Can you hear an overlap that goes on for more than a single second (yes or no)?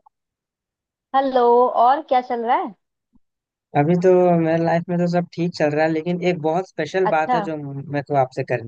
no